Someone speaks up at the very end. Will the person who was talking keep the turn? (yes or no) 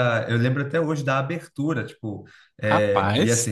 yes